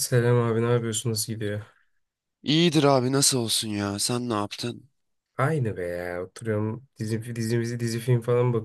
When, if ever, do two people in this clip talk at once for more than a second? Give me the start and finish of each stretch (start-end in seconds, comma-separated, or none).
none